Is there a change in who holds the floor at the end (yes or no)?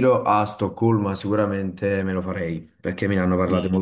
no